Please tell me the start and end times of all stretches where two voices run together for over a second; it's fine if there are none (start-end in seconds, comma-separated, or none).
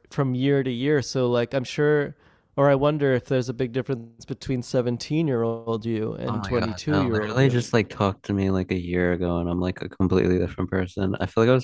6.3-7.6